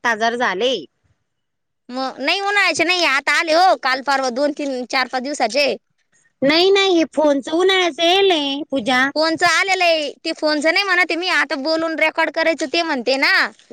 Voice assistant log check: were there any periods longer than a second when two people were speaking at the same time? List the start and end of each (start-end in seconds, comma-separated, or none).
none